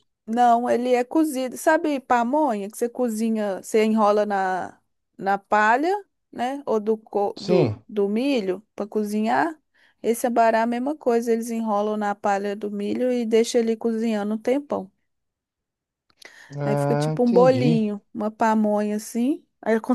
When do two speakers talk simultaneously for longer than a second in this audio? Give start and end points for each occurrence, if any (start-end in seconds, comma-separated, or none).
16.6-17.9